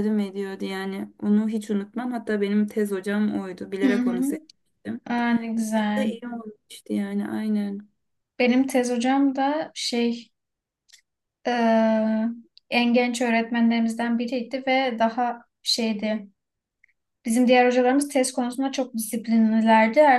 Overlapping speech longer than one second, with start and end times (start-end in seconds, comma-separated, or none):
none